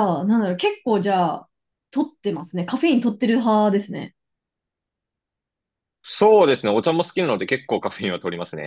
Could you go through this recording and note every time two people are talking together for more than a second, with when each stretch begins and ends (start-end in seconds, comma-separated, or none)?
none